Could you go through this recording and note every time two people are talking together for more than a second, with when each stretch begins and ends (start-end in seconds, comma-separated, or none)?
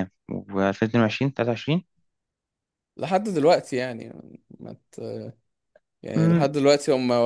none